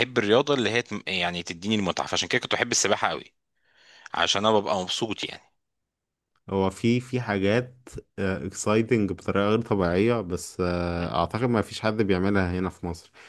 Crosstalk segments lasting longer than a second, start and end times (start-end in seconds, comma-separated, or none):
none